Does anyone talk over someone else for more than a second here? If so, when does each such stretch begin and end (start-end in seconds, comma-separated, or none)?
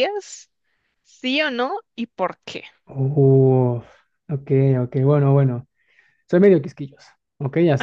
none